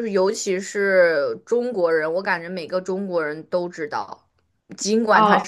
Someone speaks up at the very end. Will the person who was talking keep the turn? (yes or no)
yes